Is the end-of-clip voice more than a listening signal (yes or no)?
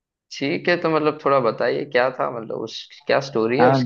yes